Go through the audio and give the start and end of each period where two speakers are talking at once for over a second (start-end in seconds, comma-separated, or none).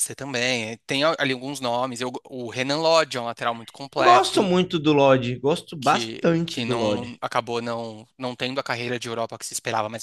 5.8-7.1